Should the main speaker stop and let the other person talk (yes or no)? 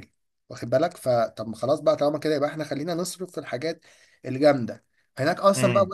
no